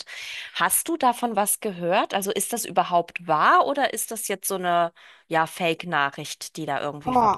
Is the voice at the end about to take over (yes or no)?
yes